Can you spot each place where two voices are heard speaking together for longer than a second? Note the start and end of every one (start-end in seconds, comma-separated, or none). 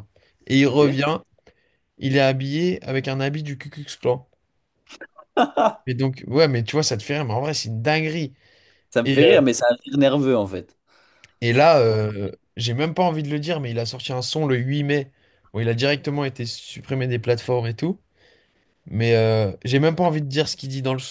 none